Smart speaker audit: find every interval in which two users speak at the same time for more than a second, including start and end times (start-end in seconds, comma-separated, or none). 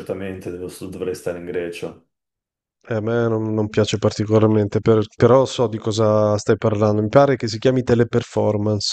none